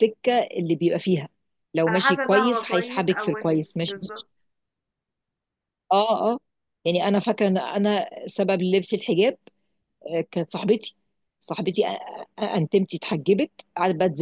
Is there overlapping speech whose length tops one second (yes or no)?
yes